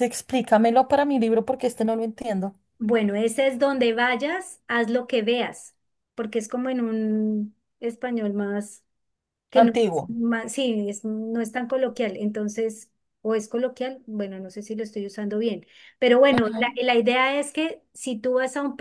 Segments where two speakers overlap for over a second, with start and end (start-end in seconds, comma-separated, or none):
none